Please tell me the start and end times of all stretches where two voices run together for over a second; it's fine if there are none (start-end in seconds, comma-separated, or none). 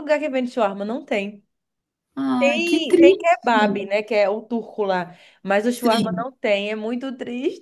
2.4-3.6